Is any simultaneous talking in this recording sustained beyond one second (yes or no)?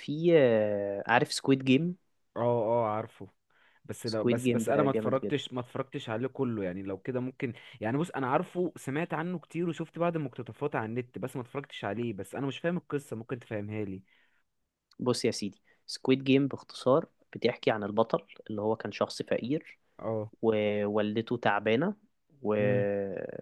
yes